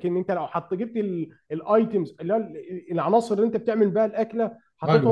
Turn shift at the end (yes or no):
no